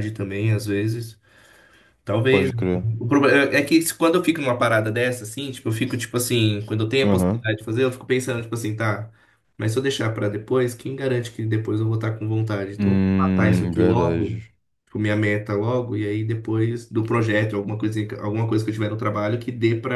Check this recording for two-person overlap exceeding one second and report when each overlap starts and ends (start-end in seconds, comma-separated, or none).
12.8-14.4